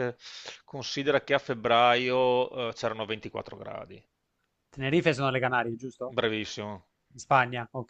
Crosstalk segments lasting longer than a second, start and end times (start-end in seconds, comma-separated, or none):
none